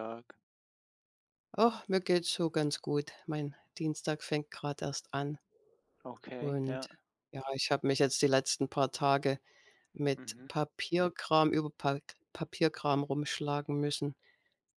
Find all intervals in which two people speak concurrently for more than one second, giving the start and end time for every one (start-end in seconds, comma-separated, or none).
none